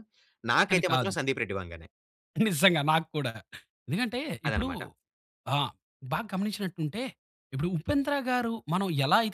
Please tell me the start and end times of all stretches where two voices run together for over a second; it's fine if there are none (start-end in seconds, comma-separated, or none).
none